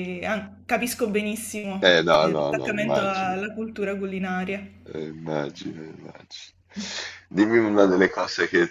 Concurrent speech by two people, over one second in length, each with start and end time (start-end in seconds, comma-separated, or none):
1.8-3.4